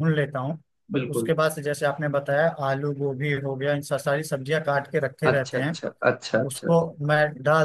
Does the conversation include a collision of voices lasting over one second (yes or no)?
no